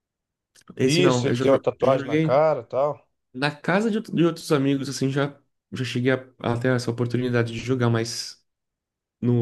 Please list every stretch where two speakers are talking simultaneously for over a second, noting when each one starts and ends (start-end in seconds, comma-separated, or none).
0.8-2.4